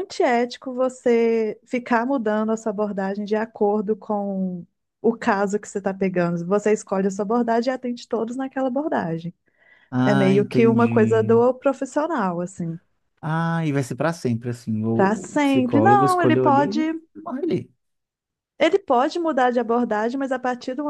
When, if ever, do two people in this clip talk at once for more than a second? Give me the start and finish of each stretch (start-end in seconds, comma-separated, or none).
10.0-11.4, 14.9-16.8